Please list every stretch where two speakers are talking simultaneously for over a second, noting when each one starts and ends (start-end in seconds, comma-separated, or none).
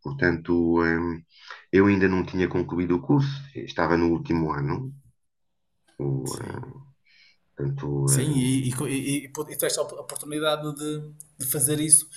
none